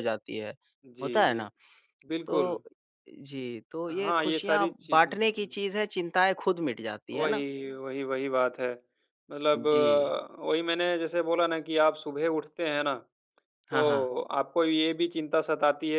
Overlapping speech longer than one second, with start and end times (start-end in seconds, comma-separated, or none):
3.9-5.6